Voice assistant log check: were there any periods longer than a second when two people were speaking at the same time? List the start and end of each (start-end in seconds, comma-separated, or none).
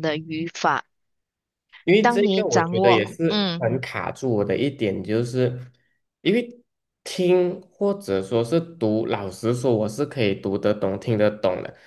2.0-3.7